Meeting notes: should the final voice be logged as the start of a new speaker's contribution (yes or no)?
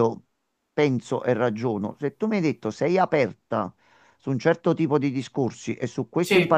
no